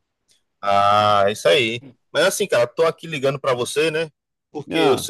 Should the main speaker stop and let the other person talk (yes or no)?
no